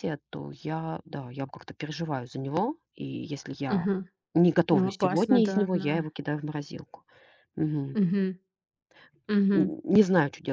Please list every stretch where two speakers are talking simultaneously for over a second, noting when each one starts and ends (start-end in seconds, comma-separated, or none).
4.7-6.1